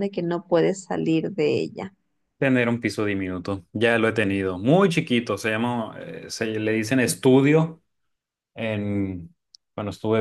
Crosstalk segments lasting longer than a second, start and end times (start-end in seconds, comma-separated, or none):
none